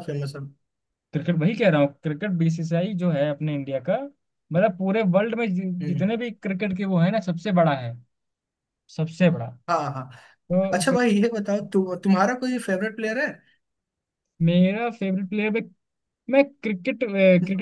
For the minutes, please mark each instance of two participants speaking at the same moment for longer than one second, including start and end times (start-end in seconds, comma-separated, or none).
none